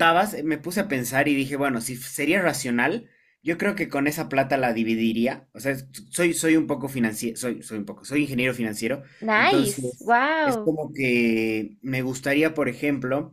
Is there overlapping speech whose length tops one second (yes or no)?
yes